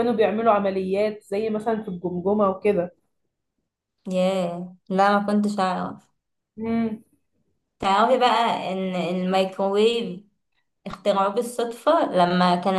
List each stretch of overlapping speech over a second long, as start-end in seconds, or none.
none